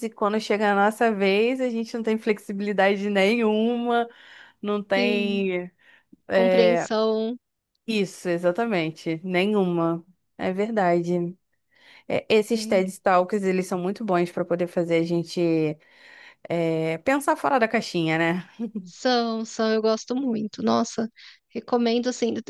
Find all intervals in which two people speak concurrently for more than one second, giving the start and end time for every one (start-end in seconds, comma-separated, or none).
none